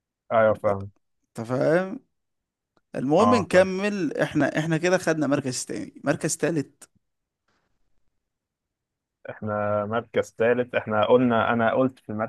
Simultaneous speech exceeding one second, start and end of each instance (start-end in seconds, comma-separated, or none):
none